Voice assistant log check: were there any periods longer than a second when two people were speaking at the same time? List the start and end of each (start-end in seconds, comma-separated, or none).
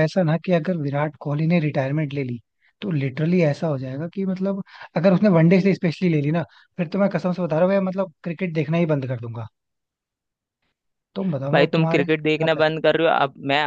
11.5-13.0